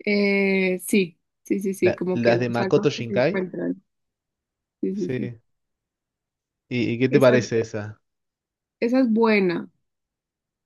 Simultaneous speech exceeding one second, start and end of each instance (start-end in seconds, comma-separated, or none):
1.8-3.5